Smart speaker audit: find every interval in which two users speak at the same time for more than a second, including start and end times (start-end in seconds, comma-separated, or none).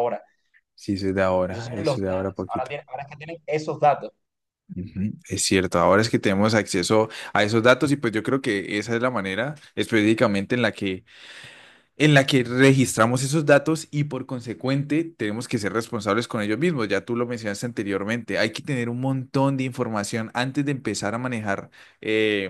1.5-2.7